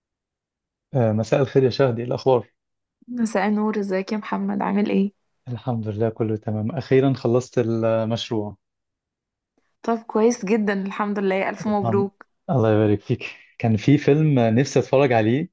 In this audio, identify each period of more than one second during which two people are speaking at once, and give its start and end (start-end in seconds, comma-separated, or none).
none